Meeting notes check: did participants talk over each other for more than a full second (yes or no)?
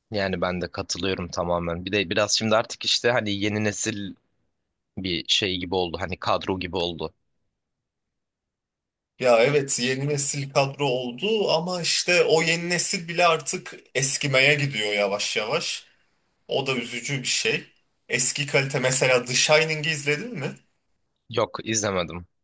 no